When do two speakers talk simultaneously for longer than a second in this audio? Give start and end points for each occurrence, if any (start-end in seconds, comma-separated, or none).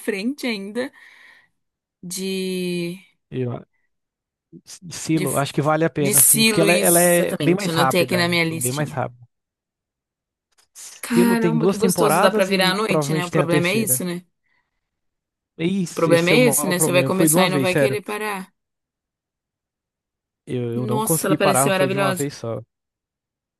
6.0-9.0, 11.1-14.0, 15.9-18.0, 20.8-22.3